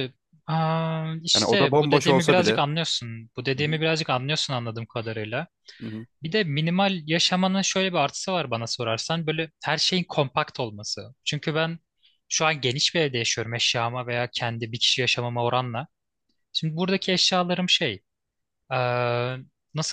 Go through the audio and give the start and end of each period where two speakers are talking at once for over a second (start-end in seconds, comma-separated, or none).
1.3-2.6